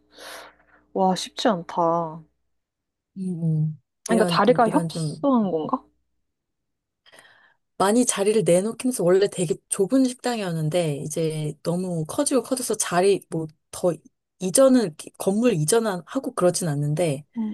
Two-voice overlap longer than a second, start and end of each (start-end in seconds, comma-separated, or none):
4.0-5.3